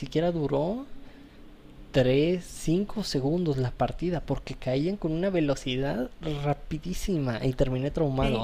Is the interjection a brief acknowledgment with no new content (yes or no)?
yes